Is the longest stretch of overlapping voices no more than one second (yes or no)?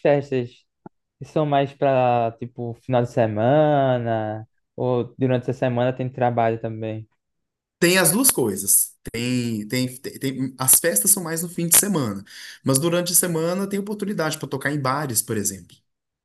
yes